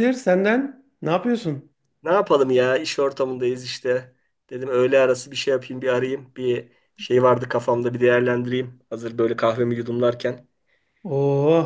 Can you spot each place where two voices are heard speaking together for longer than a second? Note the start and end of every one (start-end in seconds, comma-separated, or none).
none